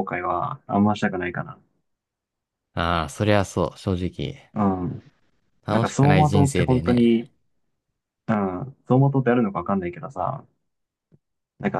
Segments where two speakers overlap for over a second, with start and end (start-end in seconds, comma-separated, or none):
5.7-7.3